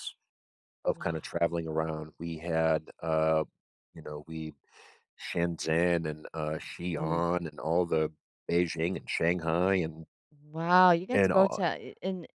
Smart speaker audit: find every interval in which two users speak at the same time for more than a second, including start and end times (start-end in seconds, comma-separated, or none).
none